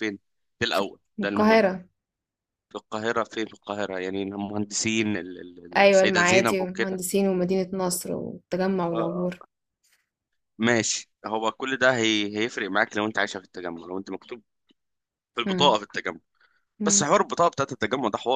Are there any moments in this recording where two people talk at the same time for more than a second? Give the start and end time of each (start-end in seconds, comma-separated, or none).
5.8-7.0